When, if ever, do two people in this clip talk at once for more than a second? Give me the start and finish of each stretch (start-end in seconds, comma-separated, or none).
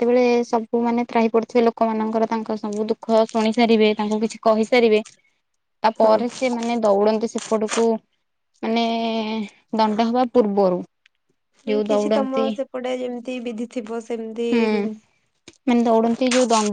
none